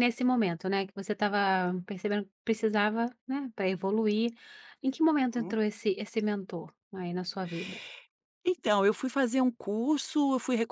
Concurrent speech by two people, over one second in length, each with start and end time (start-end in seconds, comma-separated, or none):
none